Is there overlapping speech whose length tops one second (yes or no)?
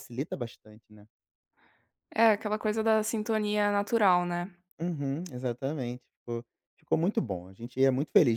no